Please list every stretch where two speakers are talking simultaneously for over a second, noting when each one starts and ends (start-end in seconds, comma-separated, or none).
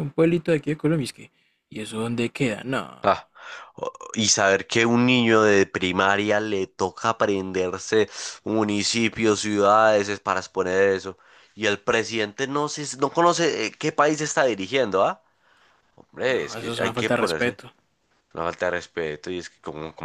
16.3-17.6